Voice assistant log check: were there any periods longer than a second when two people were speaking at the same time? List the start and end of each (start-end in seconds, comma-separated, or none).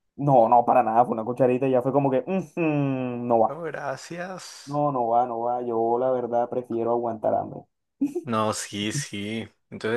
none